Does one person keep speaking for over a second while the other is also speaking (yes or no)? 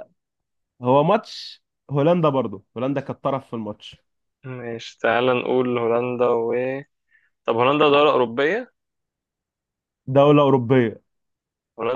no